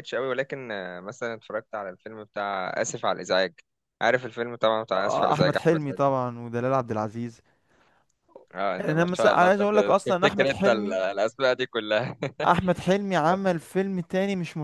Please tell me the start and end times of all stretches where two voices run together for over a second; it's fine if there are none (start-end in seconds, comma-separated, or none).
5.0-6.2, 8.8-11.0